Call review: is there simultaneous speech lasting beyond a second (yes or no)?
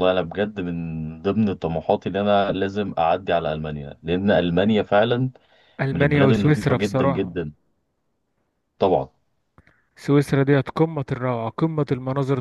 yes